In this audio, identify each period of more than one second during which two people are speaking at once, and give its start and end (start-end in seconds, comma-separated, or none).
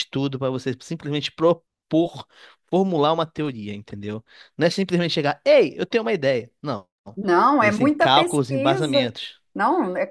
7.6-9.1